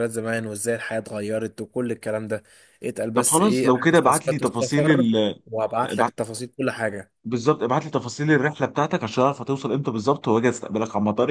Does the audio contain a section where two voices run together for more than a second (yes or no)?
yes